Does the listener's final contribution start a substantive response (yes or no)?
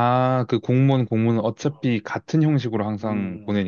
yes